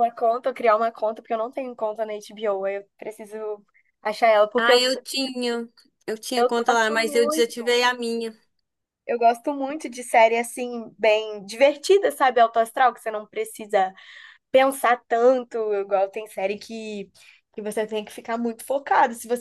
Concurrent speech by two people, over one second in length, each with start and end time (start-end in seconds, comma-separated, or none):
6.3-7.6